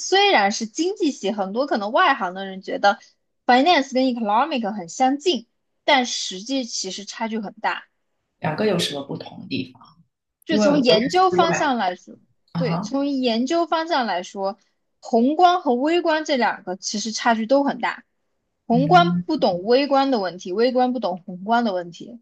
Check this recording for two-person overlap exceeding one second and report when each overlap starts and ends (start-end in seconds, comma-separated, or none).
10.5-11.7